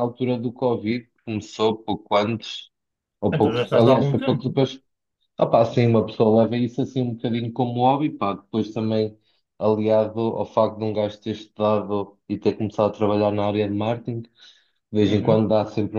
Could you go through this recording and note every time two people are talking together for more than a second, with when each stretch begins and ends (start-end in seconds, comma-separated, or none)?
3.3-4.6